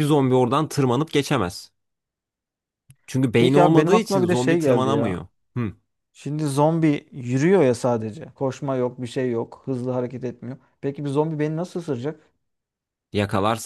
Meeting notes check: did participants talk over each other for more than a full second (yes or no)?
yes